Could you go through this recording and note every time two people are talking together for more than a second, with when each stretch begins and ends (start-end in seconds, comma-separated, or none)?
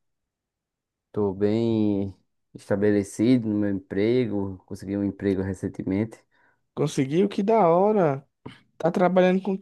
none